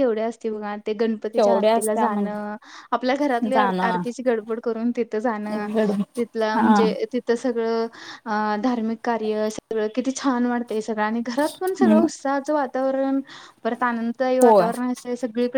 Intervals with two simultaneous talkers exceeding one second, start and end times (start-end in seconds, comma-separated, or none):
1.4-2.6